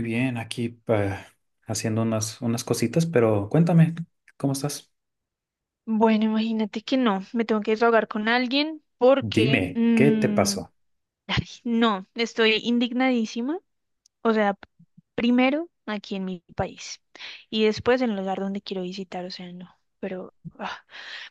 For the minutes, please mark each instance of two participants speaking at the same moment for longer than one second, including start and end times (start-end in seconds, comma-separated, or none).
9.2-10.5